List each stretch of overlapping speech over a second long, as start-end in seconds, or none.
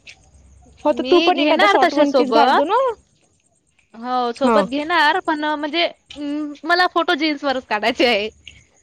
1.0-2.7